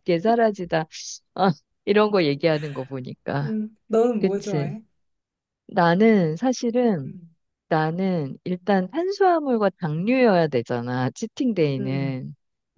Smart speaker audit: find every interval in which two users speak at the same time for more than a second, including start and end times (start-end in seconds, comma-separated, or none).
none